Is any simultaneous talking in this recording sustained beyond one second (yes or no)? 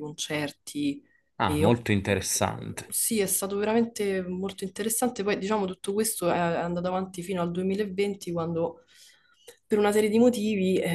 no